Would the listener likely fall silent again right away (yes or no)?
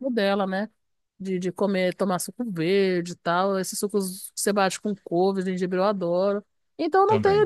yes